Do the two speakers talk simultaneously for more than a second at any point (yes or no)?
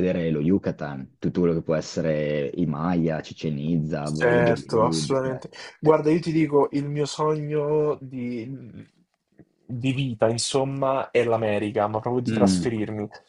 yes